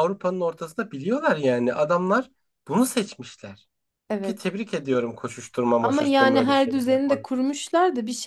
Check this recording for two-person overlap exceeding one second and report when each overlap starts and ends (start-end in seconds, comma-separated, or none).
5.8-7.3